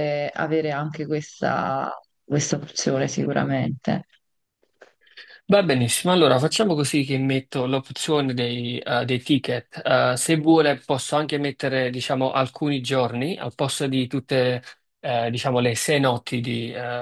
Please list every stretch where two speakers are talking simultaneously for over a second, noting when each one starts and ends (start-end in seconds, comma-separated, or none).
none